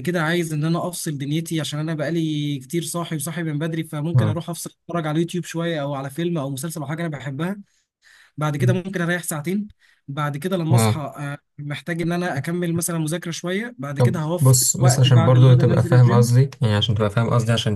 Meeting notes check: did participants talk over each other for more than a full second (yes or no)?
yes